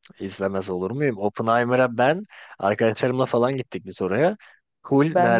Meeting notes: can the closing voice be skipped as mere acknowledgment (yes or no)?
yes